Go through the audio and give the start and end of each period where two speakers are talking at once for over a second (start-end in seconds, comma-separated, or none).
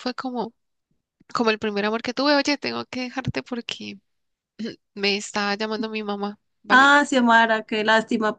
none